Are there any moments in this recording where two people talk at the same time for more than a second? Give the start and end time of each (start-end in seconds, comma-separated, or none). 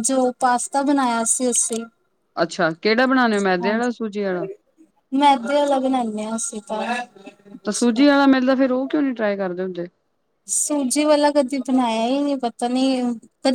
none